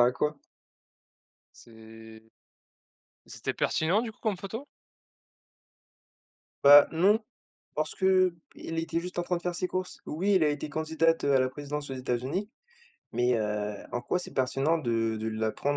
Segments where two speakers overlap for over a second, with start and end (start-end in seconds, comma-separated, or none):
none